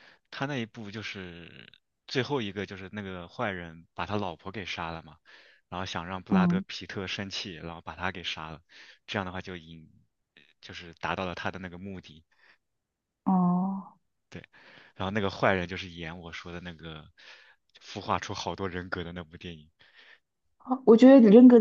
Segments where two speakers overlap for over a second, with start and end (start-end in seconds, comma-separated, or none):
none